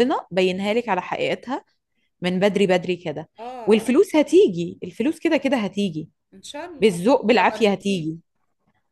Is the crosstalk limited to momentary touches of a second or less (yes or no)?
no